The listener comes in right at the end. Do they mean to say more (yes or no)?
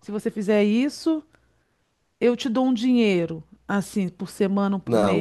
yes